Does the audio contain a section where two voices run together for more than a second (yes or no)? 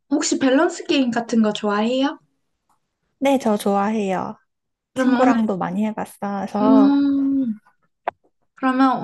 no